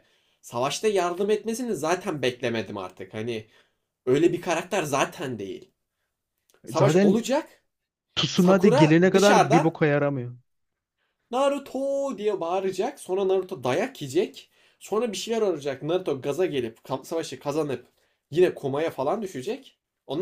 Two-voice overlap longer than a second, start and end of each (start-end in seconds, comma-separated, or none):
8.3-9.7